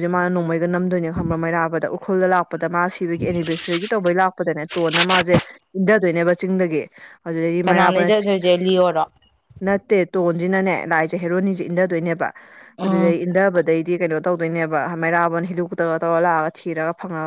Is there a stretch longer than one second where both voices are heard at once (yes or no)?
no